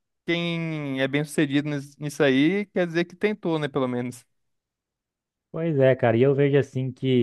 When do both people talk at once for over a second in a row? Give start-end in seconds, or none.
none